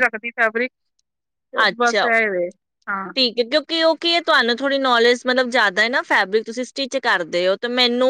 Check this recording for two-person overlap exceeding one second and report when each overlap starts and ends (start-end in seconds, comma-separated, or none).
none